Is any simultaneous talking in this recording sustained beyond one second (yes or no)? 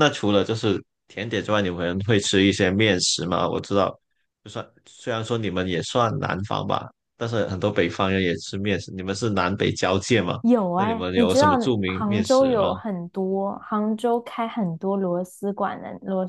yes